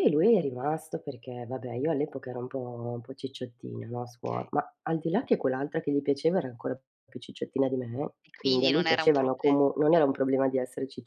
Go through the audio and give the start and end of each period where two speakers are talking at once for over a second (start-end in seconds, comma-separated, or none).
8.2-9.6